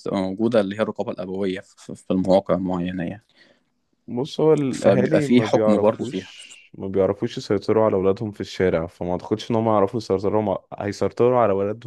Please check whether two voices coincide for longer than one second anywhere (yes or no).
yes